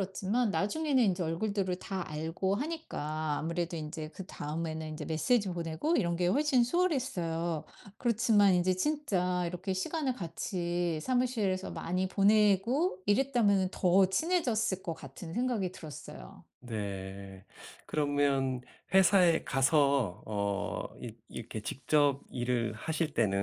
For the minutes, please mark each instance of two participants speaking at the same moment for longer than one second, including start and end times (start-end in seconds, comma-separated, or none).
none